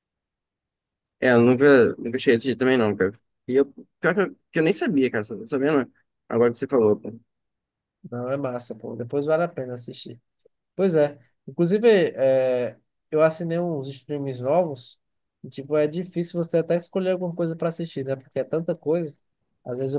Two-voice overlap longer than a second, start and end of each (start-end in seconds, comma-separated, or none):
none